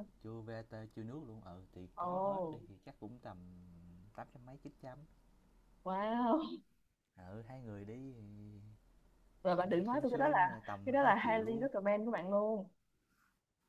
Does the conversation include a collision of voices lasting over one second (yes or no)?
yes